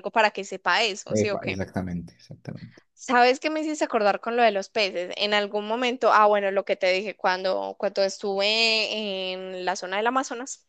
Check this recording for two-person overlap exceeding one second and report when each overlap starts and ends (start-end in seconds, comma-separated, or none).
none